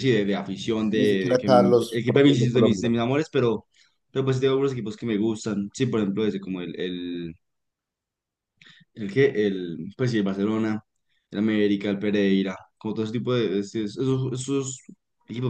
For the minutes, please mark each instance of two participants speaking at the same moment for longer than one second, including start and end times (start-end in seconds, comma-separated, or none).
0.9-2.9